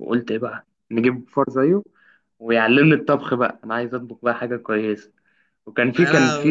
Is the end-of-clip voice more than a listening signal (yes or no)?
no